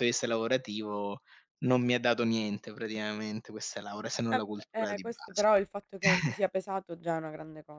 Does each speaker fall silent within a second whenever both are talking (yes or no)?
no